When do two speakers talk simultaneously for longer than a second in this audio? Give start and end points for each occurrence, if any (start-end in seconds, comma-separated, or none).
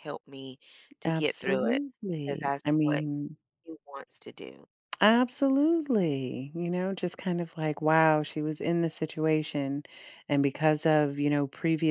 1.1-3.0